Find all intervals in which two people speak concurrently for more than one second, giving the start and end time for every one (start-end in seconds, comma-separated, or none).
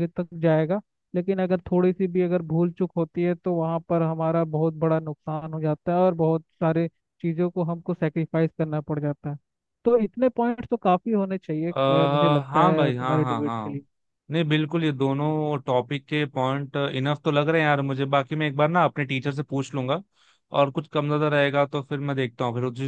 12.5-13.8